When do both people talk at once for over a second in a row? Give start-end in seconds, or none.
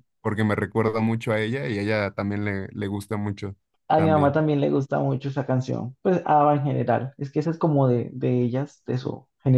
none